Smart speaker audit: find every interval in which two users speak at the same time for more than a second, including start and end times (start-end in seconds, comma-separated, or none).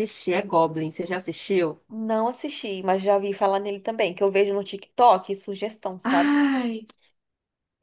none